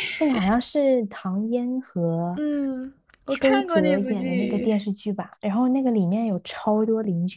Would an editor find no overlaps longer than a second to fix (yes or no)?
no